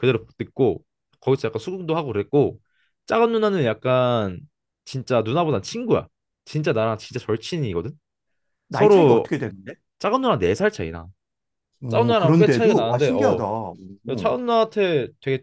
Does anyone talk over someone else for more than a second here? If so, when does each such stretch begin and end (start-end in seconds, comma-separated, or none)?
11.9-13.4